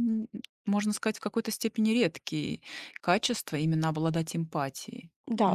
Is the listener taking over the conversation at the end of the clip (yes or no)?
yes